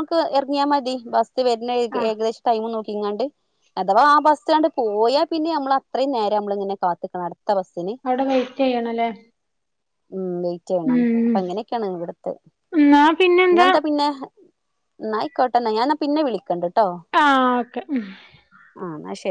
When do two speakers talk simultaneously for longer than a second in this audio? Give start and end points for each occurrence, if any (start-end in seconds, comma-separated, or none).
none